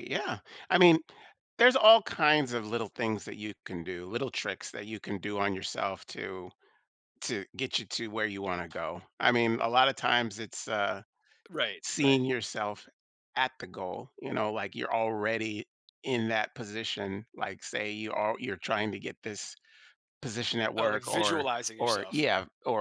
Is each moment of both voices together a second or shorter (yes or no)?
no